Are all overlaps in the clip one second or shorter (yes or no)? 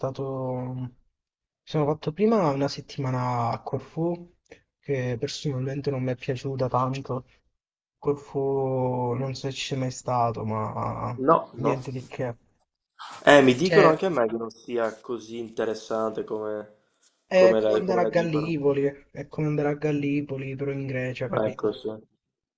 no